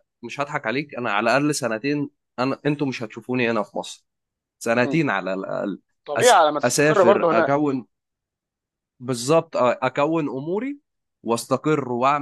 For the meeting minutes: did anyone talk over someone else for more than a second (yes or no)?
yes